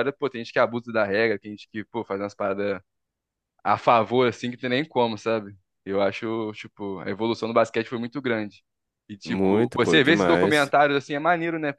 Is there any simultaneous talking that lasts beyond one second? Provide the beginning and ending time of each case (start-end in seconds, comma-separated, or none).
9.2-10.7